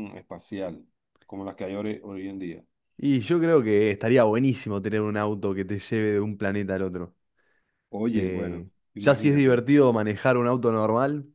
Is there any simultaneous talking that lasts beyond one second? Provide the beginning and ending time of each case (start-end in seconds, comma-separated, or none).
8.1-9.6